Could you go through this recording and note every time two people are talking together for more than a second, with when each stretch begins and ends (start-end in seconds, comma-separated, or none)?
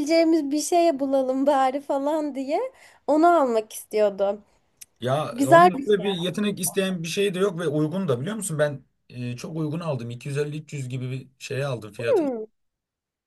5.3-6.7